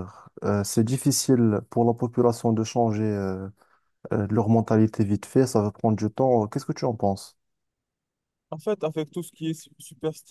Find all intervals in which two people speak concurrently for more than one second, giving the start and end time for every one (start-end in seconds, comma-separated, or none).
none